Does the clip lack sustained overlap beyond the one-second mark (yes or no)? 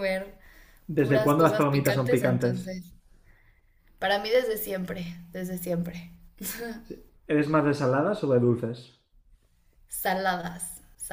no